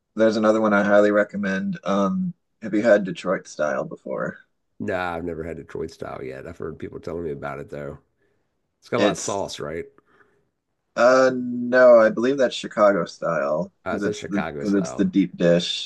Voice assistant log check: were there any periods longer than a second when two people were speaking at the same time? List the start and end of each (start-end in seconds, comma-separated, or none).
13.8-15.1